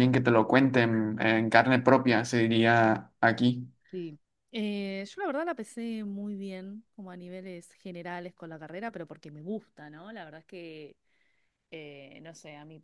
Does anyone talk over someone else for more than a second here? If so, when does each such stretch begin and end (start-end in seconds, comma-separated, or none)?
none